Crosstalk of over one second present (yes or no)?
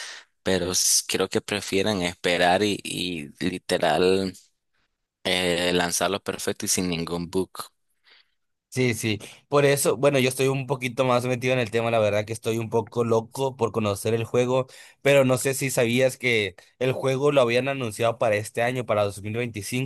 no